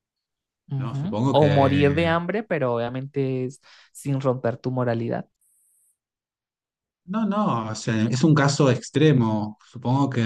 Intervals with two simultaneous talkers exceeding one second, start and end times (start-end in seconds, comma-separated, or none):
0.8-2.0